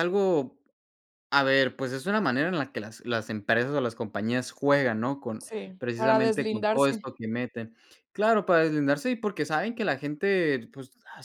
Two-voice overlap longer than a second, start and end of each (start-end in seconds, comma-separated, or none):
5.4-7.1